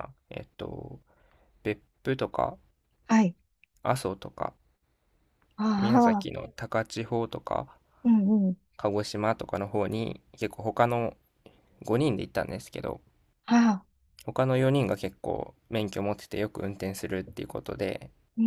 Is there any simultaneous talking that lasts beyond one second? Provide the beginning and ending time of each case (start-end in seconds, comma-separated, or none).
none